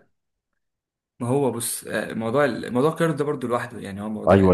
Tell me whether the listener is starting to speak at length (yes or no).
yes